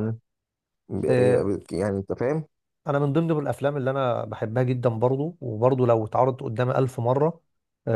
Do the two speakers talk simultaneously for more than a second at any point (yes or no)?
no